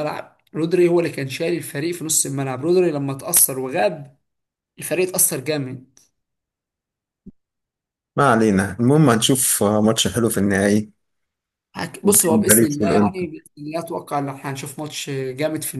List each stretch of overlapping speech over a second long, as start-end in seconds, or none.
12.0-13.3